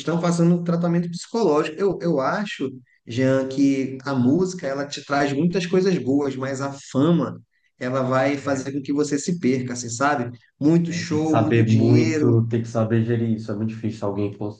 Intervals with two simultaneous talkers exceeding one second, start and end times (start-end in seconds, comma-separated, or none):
10.9-12.4